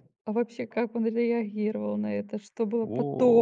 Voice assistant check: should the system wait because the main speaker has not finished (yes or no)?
yes